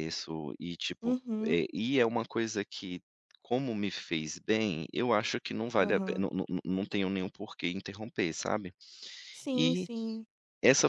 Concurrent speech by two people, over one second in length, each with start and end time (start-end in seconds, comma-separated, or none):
none